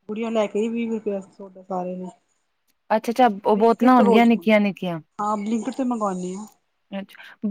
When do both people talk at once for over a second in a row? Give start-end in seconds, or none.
3.5-5.0